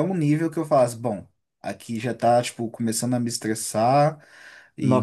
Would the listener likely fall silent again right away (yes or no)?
no